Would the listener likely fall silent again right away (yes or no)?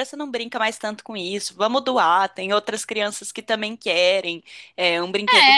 no